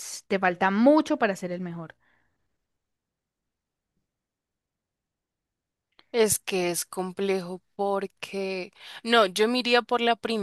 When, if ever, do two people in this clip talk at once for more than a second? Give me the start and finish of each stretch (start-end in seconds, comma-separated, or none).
none